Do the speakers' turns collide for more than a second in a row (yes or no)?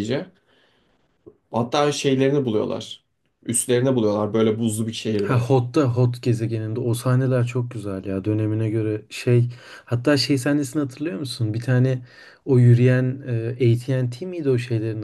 no